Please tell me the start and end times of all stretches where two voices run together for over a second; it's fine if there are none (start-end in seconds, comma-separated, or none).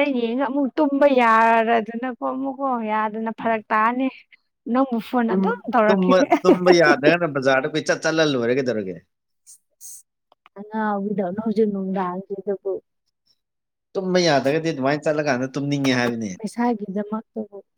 none